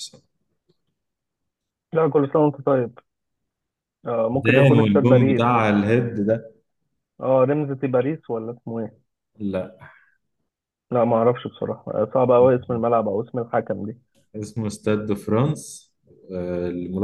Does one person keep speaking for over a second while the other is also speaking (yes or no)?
yes